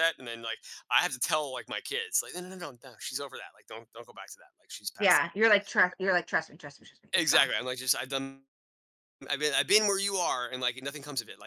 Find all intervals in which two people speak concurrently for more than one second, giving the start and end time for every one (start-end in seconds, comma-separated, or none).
none